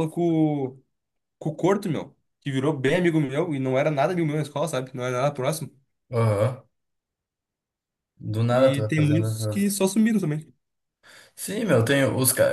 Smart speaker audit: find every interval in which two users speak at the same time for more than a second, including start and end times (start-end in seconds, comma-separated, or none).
8.5-9.8